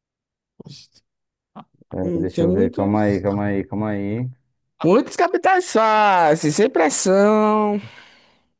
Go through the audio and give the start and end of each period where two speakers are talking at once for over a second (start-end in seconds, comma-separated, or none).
2.0-3.2